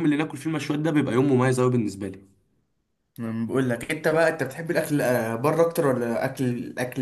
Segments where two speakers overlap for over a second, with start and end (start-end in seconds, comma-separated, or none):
none